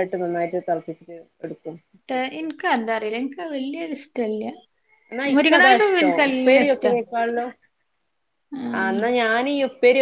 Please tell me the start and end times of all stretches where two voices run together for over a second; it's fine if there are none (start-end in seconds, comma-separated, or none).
5.4-6.9